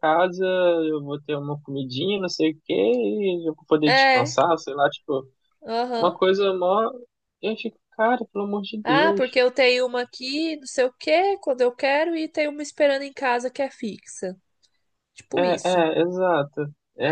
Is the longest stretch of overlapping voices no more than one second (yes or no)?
yes